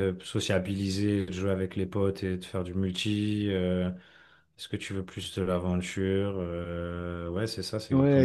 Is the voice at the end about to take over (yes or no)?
yes